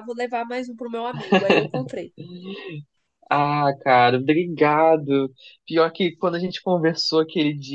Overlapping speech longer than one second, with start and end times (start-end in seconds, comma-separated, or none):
none